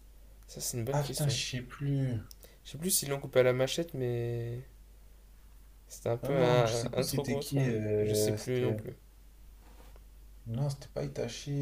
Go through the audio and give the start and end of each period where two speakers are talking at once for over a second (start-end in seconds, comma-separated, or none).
6.2-8.8